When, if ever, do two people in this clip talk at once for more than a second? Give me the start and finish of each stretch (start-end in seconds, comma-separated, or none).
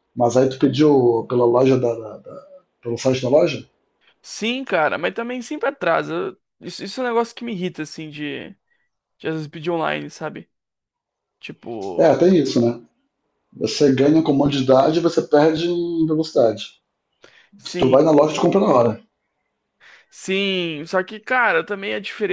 none